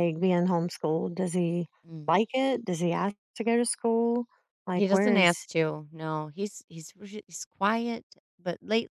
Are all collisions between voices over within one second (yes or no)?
yes